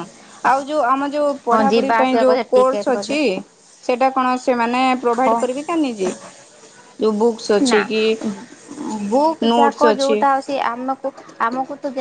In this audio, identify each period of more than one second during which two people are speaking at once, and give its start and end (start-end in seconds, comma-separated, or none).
1.5-3.2